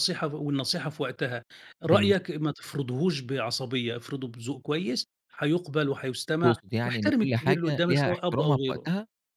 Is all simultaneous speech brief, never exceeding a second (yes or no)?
no